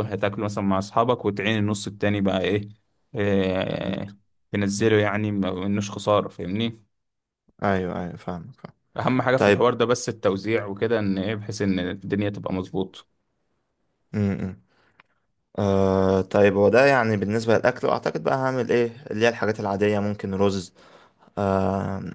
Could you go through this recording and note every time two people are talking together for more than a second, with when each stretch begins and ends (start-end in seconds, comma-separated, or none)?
none